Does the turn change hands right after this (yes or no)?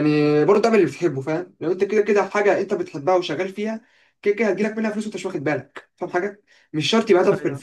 no